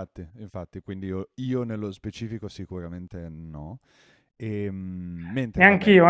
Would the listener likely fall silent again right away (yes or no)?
no